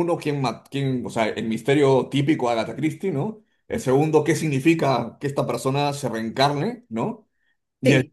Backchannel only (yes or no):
yes